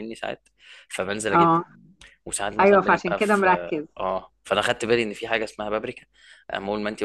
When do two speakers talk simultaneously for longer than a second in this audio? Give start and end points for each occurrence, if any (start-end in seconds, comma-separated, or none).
2.6-3.9